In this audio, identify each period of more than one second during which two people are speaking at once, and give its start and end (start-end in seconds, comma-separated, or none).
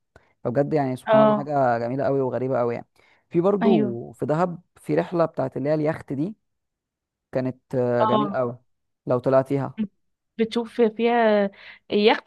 none